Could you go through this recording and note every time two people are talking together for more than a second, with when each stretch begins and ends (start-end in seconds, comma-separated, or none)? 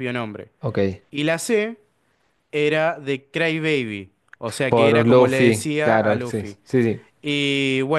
4.7-6.6